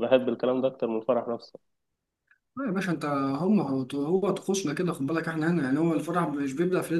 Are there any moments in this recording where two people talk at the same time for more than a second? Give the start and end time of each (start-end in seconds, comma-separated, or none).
none